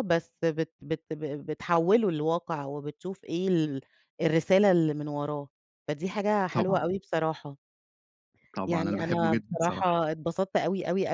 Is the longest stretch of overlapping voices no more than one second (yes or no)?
no